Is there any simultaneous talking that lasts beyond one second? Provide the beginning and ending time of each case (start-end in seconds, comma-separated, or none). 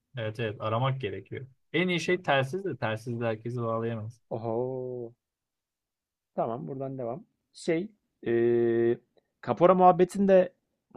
none